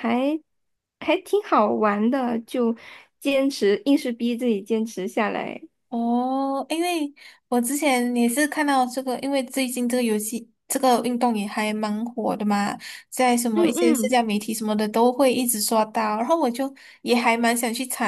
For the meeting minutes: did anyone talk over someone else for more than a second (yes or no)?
no